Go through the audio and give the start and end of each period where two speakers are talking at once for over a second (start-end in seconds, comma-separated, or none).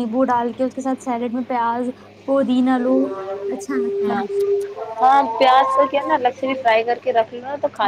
none